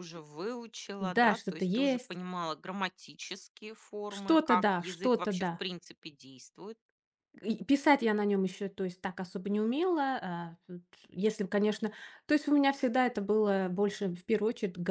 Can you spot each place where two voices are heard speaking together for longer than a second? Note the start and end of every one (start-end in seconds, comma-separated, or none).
1.0-2.2, 4.1-5.6